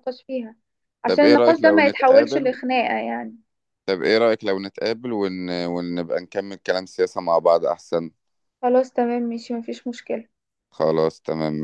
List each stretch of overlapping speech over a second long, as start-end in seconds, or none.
1.1-2.6